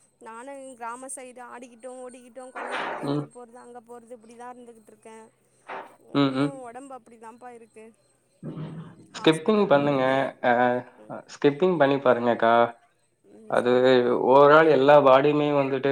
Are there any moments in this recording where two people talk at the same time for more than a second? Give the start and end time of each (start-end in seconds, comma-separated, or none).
none